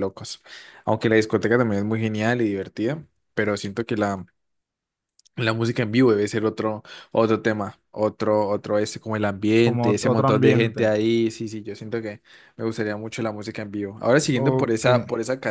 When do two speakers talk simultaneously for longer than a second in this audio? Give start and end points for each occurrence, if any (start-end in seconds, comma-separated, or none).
9.6-10.9